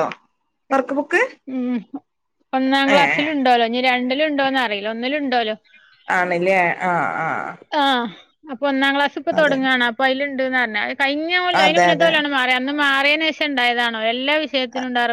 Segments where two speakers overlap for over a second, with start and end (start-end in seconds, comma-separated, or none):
none